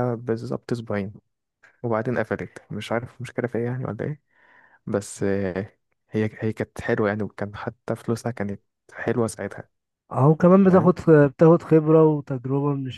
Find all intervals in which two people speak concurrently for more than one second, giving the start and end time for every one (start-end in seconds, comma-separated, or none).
none